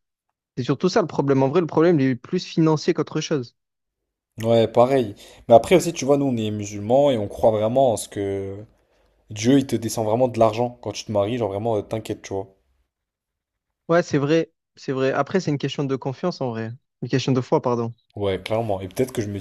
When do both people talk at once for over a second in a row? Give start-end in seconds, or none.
none